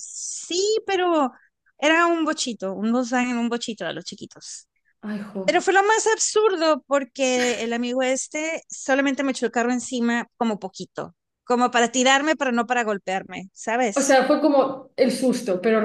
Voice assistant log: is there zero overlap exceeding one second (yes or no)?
yes